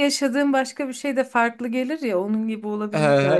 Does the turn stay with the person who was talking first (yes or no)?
no